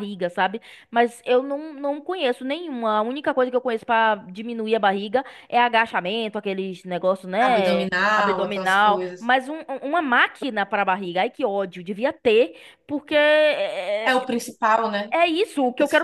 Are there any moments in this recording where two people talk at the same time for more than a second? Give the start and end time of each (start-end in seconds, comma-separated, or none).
7.4-9.3